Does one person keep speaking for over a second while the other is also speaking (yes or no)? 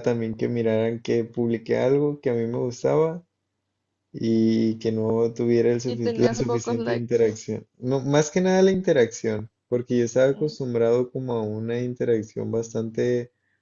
yes